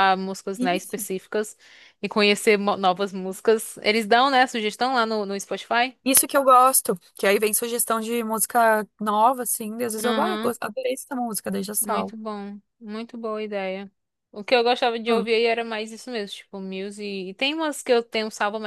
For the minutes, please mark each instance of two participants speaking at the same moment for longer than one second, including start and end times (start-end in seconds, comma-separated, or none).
none